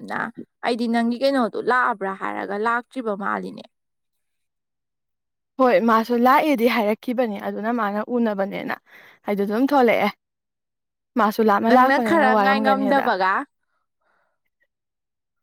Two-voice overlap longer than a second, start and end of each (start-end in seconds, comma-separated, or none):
11.7-13.1